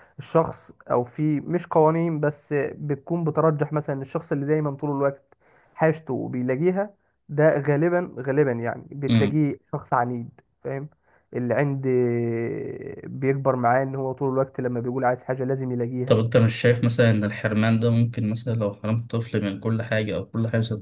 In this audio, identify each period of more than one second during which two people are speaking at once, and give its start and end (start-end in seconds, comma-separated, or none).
none